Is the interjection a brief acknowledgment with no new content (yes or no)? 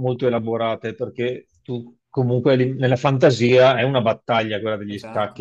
yes